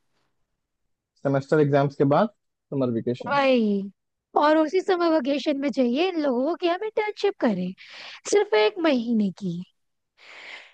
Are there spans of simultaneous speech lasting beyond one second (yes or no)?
no